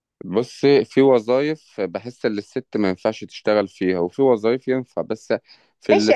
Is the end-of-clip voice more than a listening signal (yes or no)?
yes